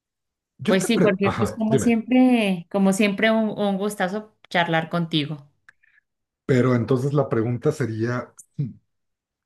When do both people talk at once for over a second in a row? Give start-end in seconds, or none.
0.7-2.0